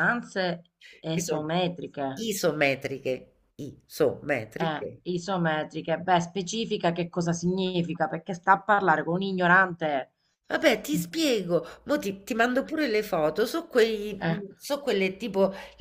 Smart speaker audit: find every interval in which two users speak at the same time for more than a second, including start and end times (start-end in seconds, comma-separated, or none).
none